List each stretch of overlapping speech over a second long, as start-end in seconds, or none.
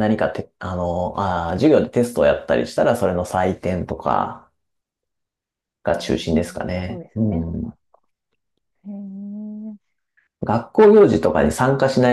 5.9-7.7